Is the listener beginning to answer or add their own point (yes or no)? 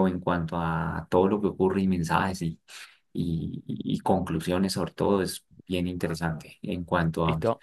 no